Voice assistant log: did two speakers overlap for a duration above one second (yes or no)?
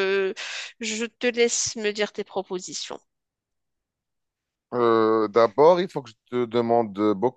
no